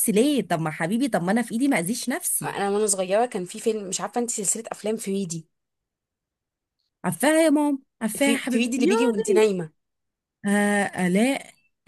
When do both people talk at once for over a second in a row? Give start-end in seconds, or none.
8.2-9.4